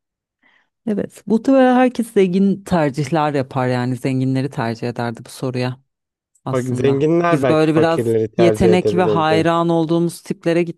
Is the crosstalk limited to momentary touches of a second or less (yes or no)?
no